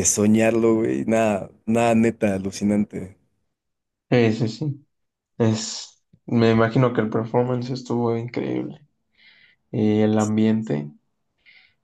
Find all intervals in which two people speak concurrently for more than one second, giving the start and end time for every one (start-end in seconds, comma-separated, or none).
none